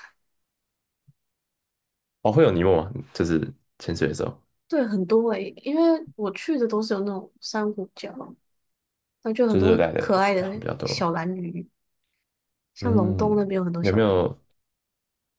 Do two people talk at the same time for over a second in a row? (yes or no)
yes